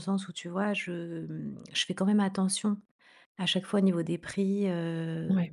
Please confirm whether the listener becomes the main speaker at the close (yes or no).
no